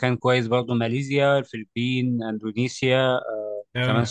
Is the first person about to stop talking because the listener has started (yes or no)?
no